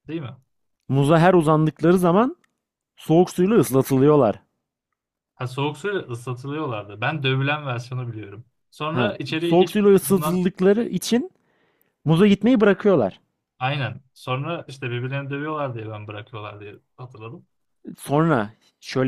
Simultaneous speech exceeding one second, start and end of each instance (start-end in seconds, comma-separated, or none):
8.9-10.4